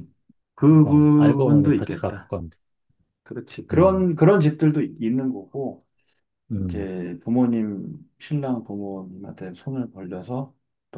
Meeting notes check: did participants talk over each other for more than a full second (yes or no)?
yes